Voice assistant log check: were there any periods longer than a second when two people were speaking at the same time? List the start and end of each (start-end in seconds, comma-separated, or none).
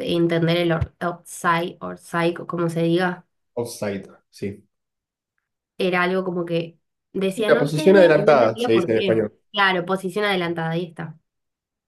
7.3-9.3